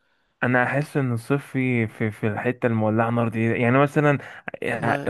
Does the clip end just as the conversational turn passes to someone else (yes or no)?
no